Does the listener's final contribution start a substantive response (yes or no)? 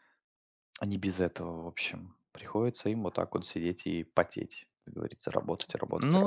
yes